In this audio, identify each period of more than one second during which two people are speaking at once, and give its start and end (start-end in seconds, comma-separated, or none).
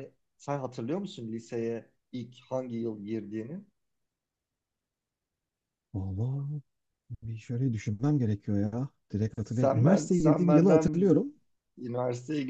9.4-11.1